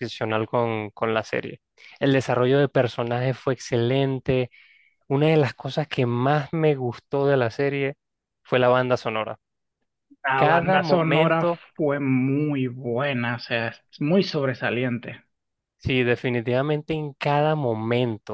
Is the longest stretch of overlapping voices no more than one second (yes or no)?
no